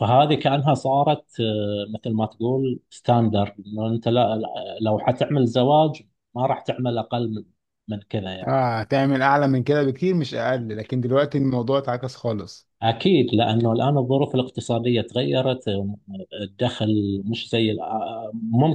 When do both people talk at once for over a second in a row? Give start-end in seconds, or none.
none